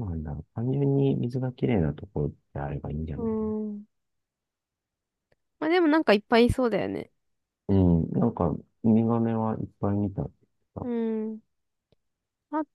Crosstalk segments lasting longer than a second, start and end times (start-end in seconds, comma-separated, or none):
none